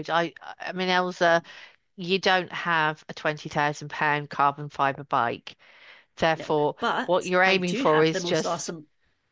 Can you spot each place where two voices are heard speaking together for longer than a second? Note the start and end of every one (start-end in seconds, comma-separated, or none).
6.3-8.7